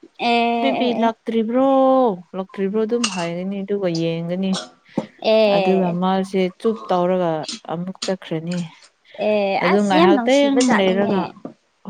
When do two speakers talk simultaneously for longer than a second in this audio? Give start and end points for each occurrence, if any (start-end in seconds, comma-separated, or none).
9.6-11.1